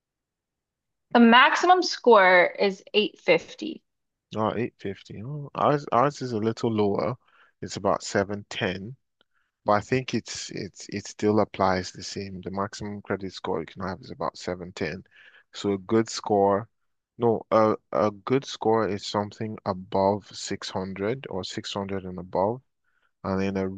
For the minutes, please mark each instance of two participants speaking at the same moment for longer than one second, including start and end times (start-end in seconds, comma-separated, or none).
none